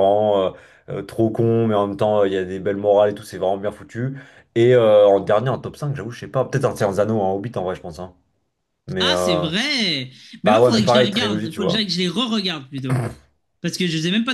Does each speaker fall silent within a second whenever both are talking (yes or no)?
no